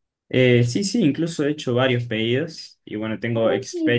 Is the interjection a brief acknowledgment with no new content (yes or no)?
no